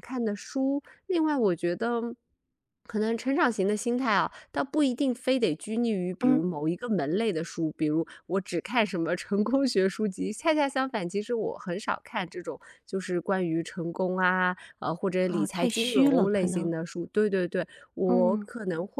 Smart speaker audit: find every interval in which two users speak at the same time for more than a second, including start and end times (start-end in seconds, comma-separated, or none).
15.3-16.7